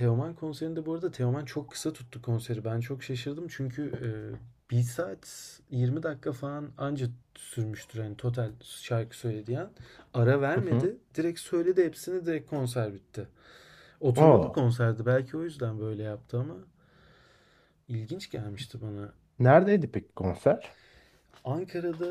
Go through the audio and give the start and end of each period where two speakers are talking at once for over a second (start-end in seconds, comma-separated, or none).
none